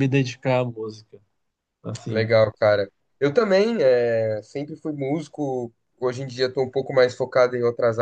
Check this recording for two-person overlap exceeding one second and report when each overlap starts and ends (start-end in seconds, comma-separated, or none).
none